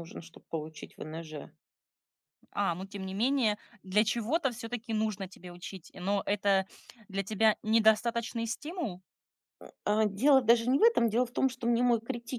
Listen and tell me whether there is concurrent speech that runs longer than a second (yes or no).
no